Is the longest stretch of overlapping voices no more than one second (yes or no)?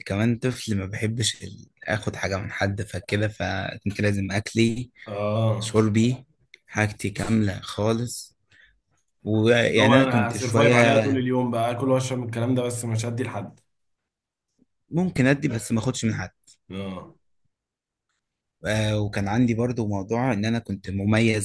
no